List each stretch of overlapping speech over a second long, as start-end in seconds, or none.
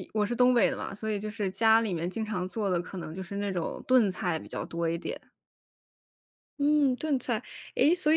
none